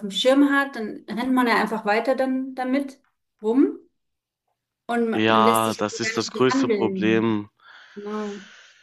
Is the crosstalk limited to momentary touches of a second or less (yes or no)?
no